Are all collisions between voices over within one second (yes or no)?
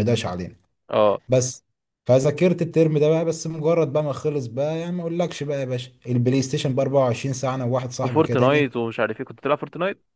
yes